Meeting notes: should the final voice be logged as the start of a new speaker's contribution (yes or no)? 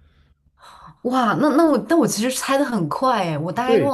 no